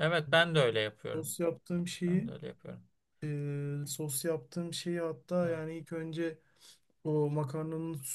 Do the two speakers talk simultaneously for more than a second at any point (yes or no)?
no